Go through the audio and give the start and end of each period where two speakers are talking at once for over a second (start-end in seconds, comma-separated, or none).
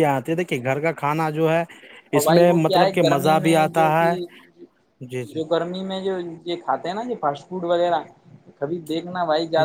2.2-4.2